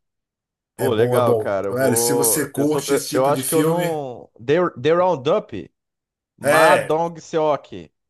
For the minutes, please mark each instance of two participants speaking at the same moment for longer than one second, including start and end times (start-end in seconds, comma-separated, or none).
0.8-4.0